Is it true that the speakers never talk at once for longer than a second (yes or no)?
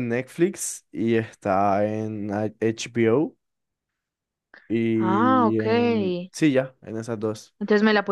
no